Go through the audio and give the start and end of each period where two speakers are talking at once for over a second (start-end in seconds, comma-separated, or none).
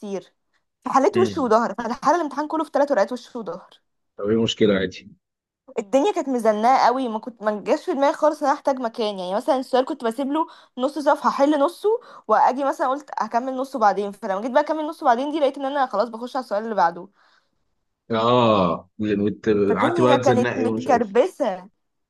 19.7-21.1